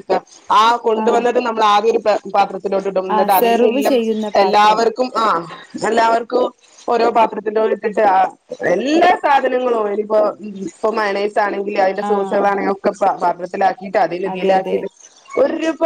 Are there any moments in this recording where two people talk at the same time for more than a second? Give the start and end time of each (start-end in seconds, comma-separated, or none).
3.2-4.8